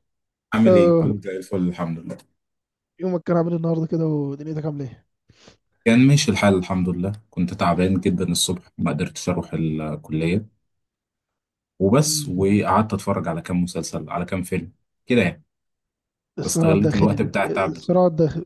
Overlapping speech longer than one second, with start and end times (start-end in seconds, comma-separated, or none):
16.4-17.8